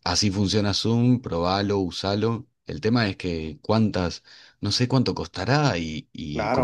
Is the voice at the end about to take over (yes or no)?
yes